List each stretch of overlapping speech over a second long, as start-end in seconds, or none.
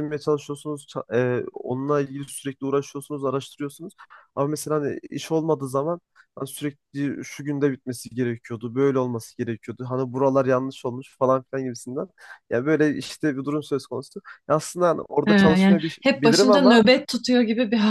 15.2-16.8